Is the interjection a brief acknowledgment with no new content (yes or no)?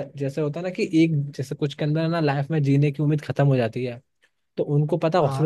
yes